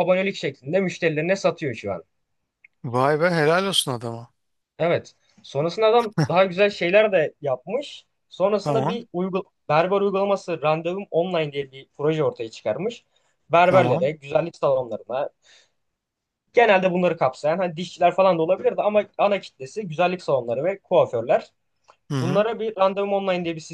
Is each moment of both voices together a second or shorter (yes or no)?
yes